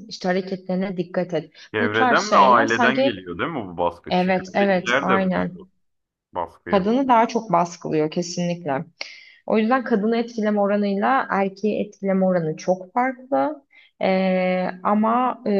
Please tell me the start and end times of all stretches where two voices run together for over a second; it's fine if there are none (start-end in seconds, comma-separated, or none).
1.7-3.3, 4.1-5.5